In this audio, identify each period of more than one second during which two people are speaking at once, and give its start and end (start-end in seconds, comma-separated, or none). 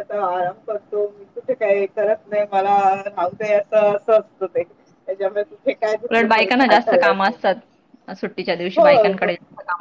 6.1-7.3